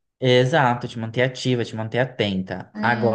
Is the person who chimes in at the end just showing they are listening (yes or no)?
yes